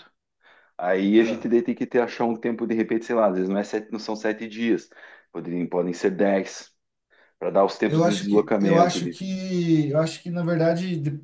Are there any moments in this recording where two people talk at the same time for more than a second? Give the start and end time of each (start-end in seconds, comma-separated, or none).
7.9-9.2